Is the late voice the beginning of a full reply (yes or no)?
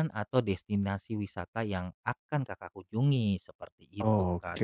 yes